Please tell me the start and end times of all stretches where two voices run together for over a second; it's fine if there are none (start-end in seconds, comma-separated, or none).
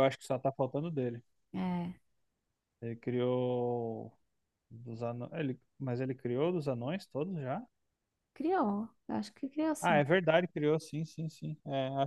none